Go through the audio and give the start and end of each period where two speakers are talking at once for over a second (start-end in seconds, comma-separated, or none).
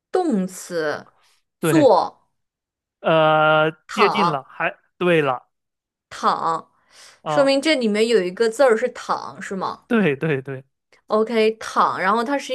none